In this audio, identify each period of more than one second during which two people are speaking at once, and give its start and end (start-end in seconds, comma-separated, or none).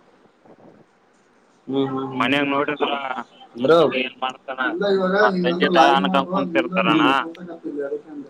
5.2-7.1